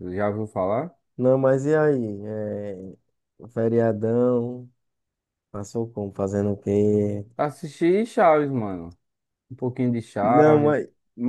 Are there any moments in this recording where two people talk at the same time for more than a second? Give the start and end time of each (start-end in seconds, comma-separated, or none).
none